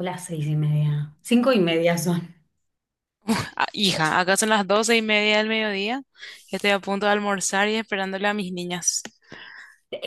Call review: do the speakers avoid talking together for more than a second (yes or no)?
yes